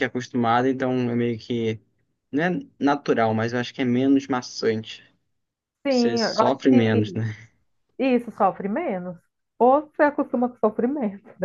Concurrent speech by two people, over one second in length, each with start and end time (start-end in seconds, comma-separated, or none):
5.9-7.2